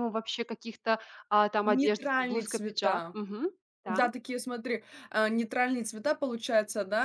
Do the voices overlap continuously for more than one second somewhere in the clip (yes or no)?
yes